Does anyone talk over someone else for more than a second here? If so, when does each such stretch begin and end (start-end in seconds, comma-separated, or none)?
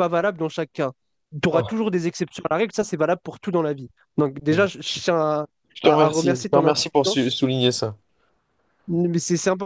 5.8-7.3